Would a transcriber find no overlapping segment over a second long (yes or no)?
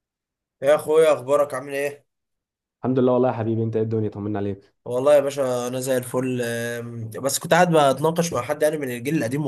yes